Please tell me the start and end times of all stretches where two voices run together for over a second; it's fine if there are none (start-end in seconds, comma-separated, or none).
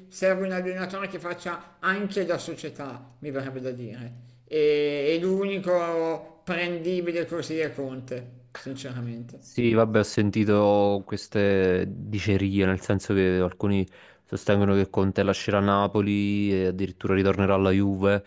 none